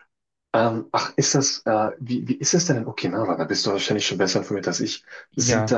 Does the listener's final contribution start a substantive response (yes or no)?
no